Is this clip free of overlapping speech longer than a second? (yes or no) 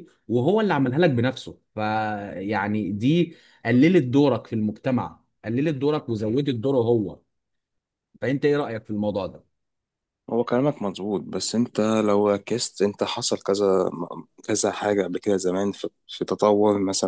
yes